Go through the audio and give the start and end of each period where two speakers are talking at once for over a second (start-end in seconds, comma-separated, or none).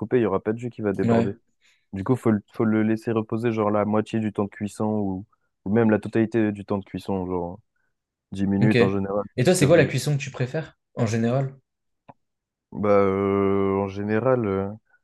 8.6-10.0